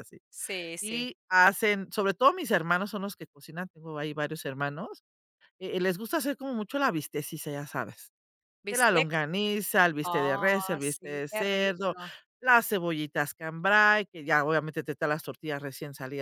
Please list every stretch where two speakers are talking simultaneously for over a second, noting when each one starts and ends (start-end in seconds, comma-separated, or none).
10.0-11.9